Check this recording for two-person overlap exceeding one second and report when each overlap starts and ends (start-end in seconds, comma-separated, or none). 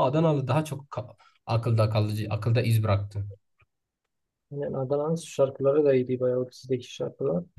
none